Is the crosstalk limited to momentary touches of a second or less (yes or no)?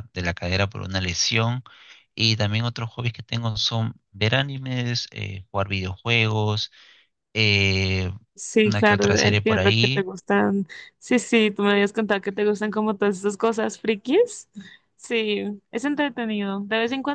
no